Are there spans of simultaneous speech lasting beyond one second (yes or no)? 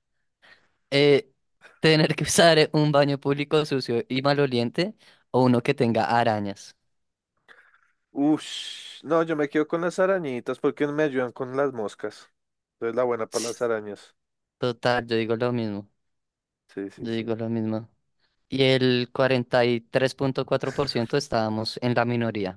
no